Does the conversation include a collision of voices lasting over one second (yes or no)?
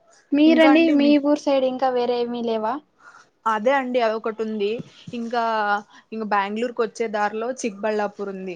no